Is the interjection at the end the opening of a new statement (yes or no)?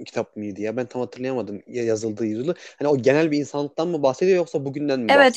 yes